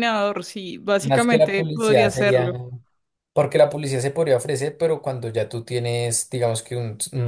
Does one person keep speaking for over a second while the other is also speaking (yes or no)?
yes